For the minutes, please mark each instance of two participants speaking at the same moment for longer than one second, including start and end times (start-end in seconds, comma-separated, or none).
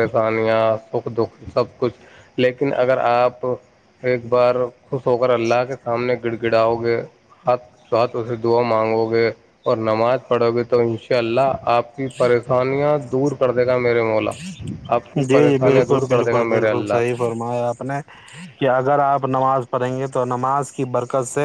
15.2-17.0